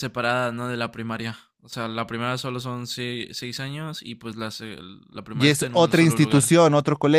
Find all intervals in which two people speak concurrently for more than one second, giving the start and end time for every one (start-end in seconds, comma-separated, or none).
5.3-6.5